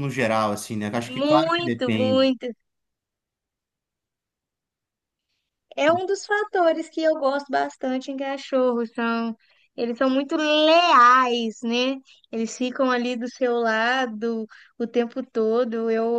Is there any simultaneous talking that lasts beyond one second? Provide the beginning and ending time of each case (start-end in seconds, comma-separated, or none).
1.1-2.3